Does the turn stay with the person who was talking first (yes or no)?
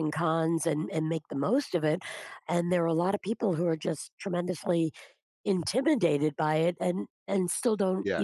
yes